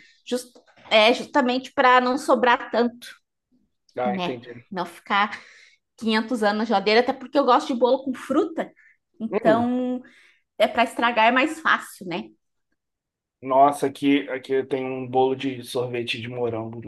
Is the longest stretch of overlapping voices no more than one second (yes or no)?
yes